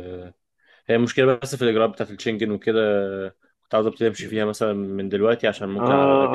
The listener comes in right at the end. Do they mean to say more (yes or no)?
yes